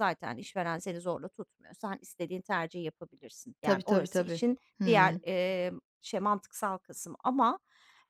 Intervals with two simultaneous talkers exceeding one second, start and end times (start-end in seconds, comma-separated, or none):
3.6-5.2